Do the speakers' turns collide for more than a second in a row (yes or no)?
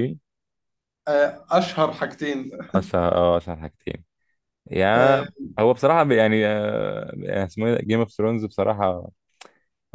no